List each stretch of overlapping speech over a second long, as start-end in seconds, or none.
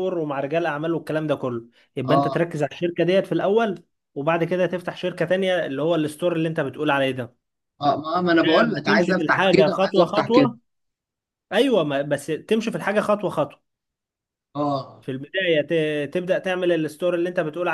8.3-10.5